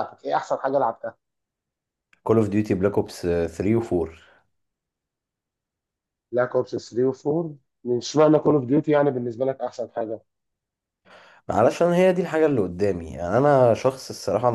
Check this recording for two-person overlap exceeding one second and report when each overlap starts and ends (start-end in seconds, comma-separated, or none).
none